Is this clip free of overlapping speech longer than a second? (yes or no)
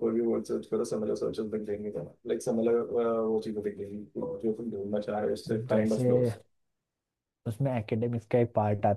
yes